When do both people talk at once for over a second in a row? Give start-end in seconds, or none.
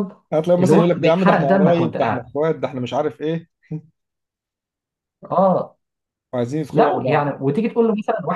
0.6-2.3